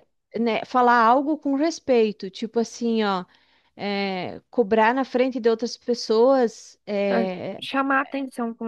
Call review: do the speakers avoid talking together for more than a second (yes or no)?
yes